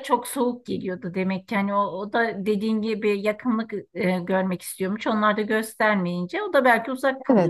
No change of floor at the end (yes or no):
no